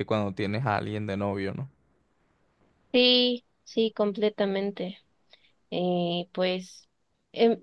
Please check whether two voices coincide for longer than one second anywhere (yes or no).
no